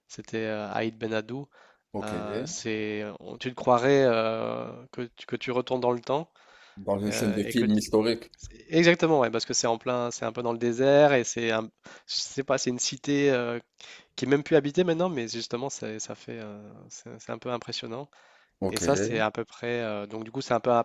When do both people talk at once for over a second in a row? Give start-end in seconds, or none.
none